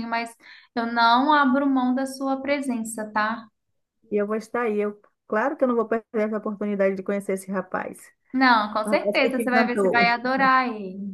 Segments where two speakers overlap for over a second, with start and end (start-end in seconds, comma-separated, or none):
8.8-10.1